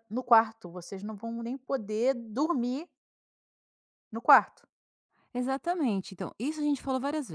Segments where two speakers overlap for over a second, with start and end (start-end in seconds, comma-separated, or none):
none